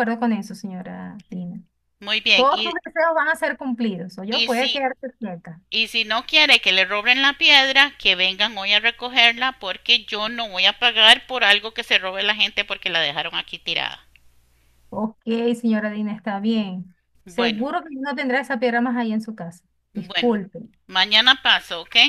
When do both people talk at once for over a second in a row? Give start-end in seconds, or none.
none